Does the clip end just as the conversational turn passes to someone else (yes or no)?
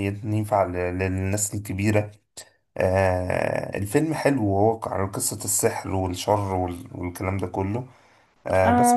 yes